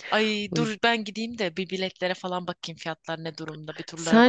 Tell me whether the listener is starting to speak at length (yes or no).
yes